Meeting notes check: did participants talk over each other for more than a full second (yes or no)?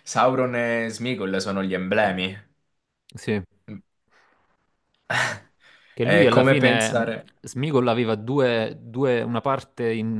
yes